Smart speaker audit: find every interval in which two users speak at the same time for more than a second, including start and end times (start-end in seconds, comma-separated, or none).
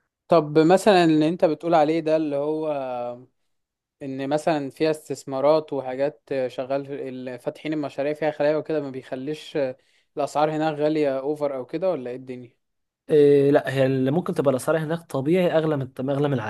none